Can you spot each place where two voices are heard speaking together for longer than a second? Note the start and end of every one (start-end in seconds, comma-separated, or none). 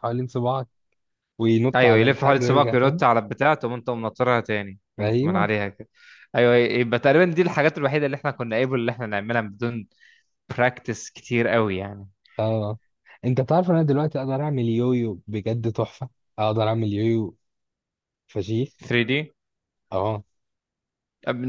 1.7-3.0